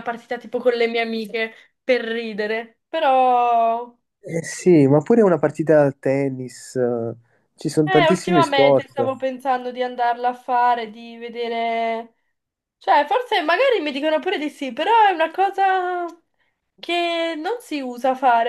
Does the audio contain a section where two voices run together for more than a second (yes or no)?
yes